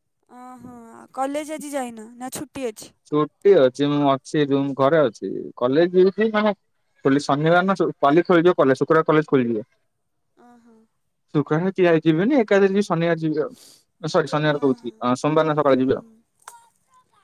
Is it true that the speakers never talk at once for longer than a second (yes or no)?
yes